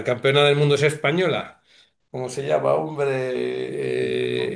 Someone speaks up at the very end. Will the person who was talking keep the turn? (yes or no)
yes